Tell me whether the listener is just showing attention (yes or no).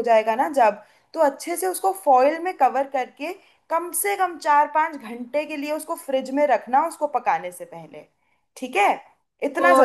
no